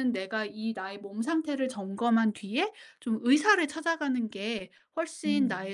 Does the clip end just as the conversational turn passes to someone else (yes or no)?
no